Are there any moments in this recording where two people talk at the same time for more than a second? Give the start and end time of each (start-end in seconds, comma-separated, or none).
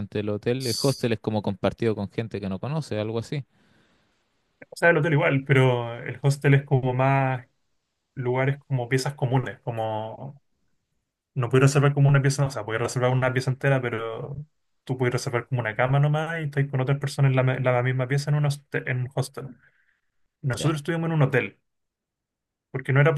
none